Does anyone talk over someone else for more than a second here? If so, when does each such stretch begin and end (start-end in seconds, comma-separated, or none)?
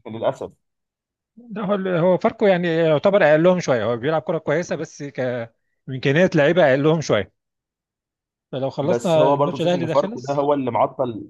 8.8-10.5